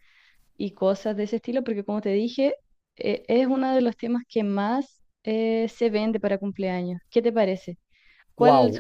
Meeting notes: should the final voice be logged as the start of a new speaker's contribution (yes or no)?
yes